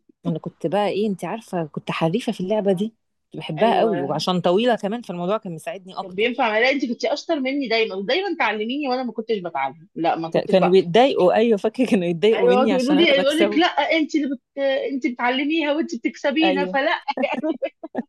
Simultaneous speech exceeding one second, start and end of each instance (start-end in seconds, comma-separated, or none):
12.3-13.7